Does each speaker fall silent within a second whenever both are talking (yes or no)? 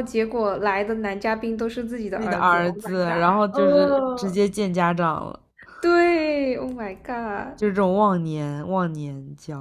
no